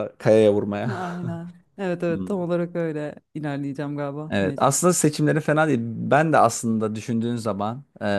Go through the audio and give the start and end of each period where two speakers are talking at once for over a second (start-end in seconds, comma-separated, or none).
none